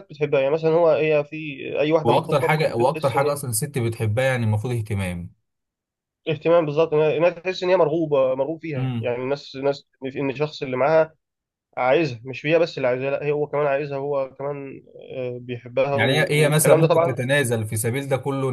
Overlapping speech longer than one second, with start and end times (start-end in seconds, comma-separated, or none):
2.0-3.4, 15.9-17.1